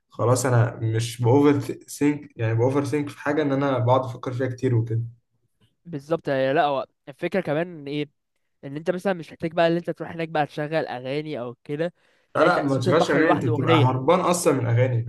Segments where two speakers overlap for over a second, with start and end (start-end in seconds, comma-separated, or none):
12.4-13.9